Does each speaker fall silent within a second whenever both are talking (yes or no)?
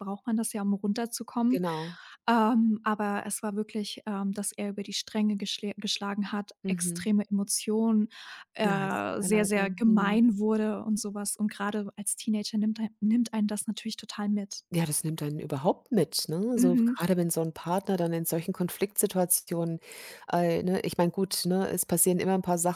no